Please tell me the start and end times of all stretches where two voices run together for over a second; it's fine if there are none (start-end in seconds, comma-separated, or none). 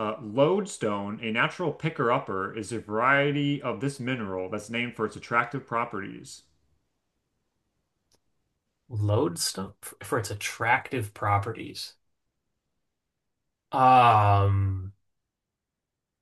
none